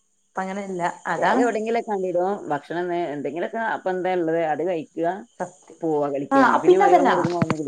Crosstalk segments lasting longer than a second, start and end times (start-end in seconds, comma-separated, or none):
none